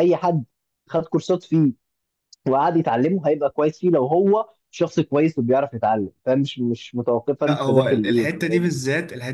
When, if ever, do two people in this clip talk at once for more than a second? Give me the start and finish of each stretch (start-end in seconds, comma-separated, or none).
7.4-8.7